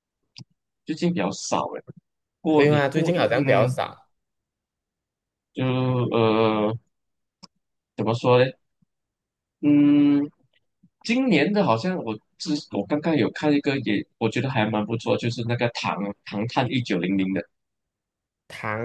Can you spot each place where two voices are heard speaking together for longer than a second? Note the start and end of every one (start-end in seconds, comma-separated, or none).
2.5-3.8